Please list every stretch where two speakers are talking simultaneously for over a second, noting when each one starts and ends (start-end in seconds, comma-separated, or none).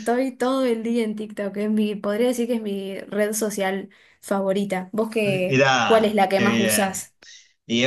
5.2-7.0